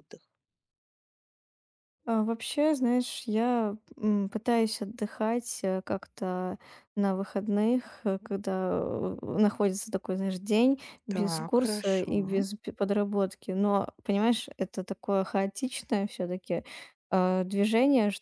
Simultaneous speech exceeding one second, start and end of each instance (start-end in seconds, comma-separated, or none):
11.1-12.4